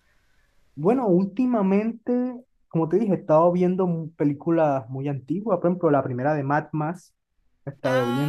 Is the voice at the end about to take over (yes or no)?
yes